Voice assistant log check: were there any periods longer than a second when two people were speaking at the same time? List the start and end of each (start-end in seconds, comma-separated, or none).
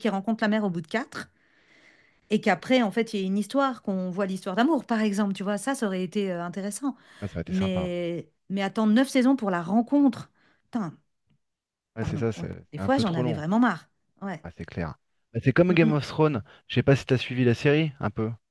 12.0-13.4